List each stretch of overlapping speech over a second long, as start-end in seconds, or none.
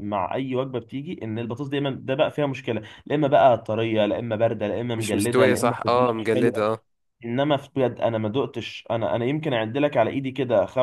4.9-6.6